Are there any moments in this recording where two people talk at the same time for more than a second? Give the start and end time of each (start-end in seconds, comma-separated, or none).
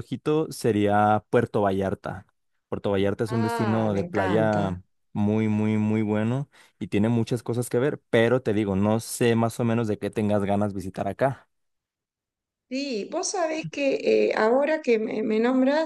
3.4-4.7